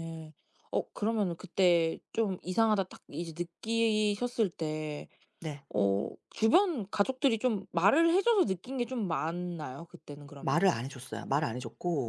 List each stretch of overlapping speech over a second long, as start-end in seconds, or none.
none